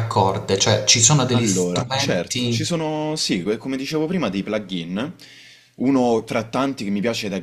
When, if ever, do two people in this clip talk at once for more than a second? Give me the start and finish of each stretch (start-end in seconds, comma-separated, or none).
1.3-2.6